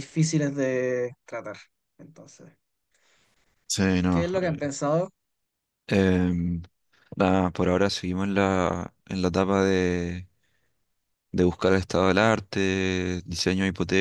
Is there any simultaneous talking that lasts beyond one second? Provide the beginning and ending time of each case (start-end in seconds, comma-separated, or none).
none